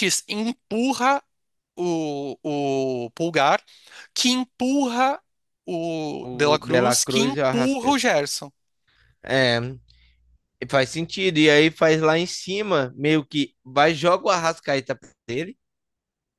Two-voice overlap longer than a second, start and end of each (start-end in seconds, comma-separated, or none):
6.2-8.1